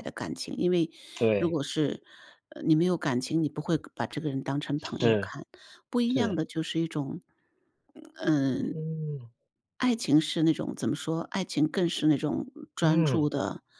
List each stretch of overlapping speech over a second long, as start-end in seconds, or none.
none